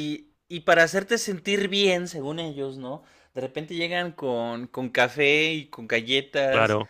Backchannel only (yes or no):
yes